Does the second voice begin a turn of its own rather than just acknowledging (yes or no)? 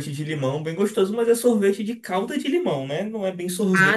no